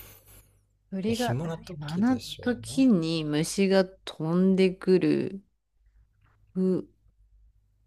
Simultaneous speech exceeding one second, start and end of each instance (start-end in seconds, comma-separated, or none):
1.1-2.9